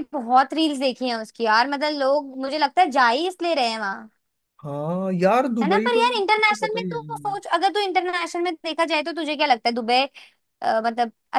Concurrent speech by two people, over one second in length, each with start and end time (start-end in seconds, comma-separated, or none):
5.6-7.0